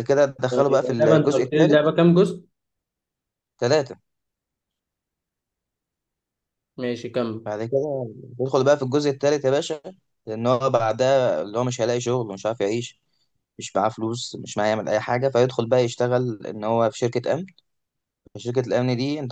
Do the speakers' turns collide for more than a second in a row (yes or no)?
yes